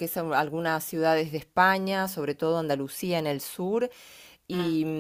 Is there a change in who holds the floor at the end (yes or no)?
no